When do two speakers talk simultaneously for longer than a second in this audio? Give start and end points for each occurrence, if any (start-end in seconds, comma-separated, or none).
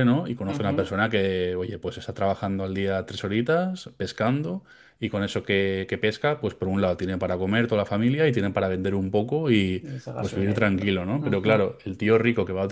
9.8-11.5